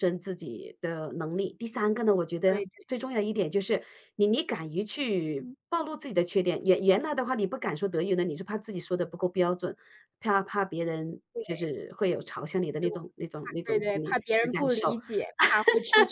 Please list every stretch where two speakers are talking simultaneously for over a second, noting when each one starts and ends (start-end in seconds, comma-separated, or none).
13.6-15.0